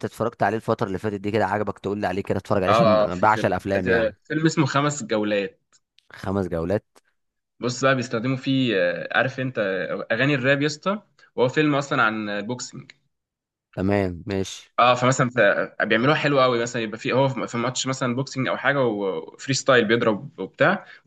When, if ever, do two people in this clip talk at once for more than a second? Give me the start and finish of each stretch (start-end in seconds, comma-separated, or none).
2.7-4.2